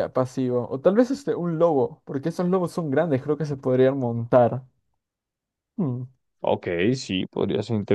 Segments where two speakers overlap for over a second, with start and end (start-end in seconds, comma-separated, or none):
none